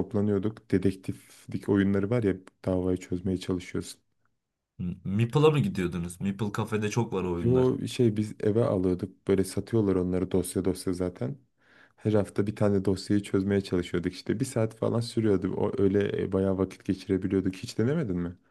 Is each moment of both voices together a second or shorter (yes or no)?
yes